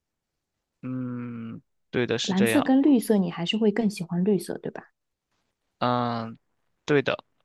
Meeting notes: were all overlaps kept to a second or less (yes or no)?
yes